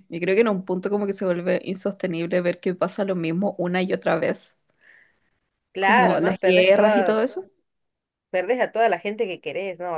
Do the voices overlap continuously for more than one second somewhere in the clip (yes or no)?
yes